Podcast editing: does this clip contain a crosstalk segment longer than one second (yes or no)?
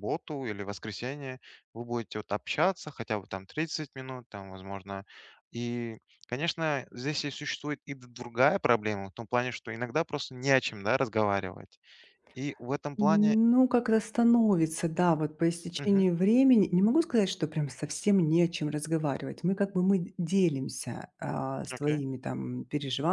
no